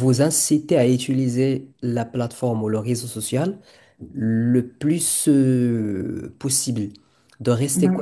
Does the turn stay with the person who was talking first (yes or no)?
yes